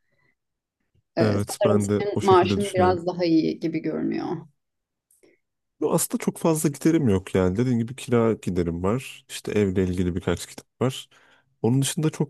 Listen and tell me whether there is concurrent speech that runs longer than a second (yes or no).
yes